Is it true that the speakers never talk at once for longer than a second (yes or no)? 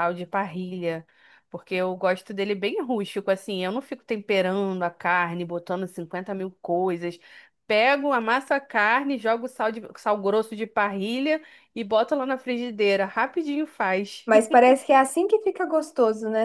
yes